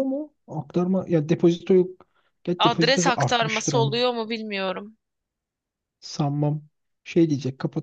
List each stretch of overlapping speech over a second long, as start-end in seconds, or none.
2.6-4.0